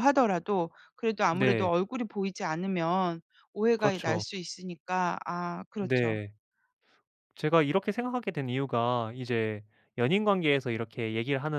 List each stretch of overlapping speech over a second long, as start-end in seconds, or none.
none